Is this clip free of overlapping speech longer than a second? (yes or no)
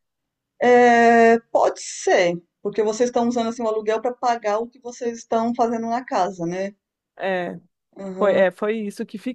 yes